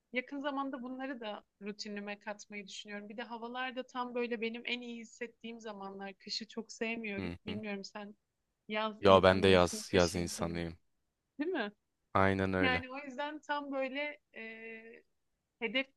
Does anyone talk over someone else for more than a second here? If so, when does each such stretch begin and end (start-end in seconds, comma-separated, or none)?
9.0-10.7